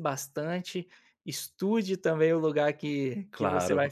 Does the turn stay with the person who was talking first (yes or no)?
yes